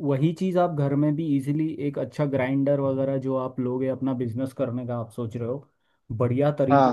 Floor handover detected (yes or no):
no